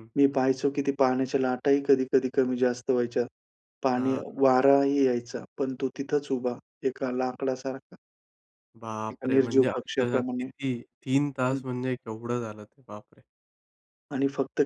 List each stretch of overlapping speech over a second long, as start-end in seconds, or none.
9.1-10.4